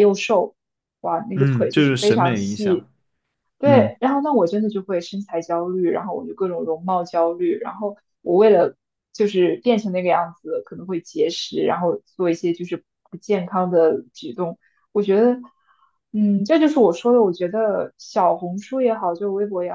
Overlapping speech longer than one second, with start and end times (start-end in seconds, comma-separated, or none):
1.3-2.9